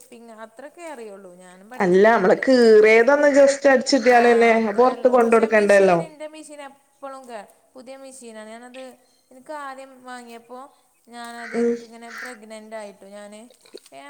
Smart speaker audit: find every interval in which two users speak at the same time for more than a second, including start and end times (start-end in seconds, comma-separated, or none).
4.2-6.0